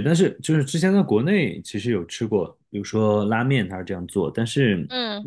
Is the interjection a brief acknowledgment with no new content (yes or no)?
yes